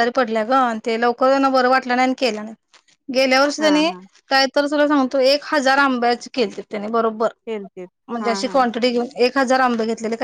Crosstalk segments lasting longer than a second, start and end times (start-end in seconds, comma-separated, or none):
none